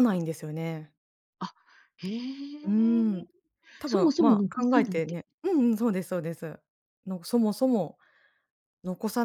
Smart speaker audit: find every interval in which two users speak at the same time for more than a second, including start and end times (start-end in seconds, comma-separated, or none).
3.8-5.2